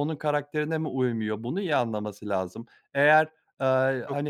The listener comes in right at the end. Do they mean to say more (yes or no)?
no